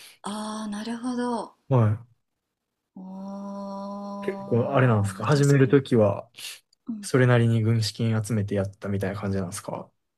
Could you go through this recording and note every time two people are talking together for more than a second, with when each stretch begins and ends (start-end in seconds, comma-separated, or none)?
4.3-5.8